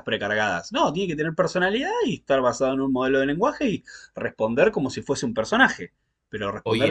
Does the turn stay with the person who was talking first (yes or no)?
yes